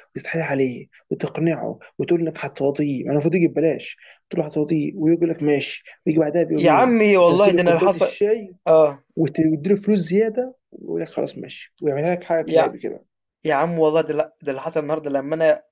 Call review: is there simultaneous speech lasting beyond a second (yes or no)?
yes